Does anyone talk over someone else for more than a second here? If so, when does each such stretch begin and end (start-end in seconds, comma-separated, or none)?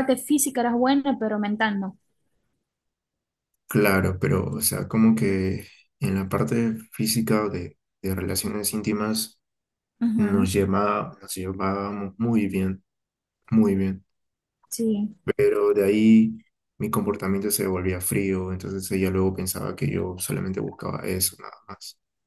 none